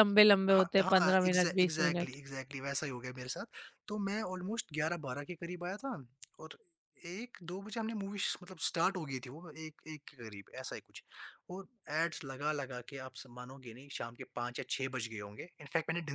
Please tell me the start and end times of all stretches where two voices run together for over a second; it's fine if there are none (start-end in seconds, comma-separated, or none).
0.5-2.2